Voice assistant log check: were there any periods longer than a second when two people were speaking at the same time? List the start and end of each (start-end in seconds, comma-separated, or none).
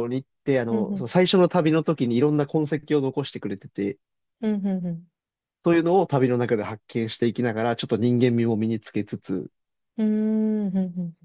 none